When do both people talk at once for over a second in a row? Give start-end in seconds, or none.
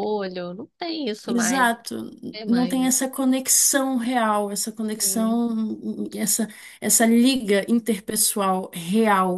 none